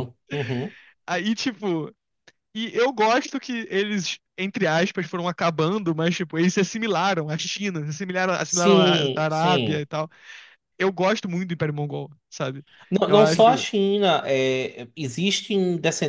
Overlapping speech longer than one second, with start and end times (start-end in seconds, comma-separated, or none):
8.5-9.8